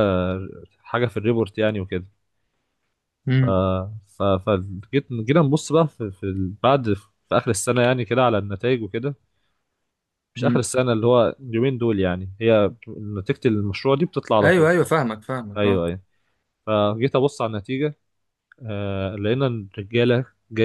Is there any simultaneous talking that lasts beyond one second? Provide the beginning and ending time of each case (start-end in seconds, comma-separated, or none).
none